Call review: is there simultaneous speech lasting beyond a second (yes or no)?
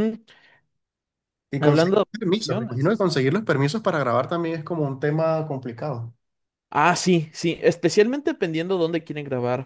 yes